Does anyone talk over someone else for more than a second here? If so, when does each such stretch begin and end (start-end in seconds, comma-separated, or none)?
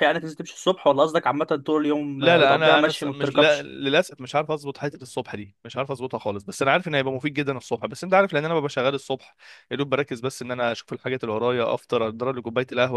2.2-3.7